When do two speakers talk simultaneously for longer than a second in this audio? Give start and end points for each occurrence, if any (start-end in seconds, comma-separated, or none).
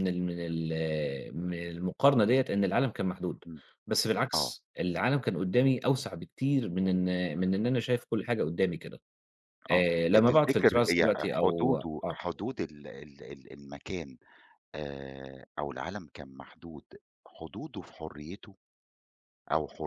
9.7-12.2